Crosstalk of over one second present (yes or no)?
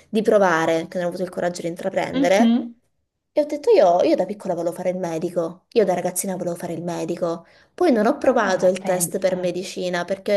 yes